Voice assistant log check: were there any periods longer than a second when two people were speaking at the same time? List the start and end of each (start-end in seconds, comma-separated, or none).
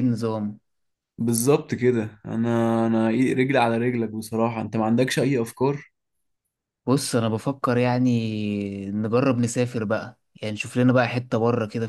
none